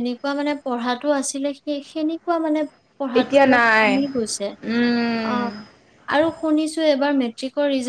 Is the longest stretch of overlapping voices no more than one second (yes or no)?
no